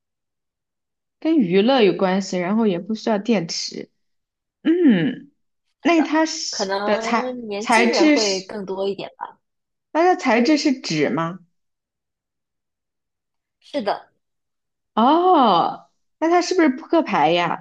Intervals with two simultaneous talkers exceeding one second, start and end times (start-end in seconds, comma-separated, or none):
6.5-8.5